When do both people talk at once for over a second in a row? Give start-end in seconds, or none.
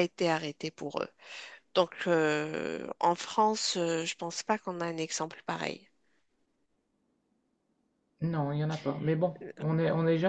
none